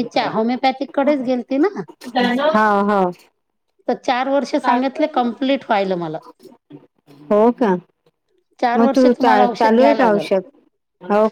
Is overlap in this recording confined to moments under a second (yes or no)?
no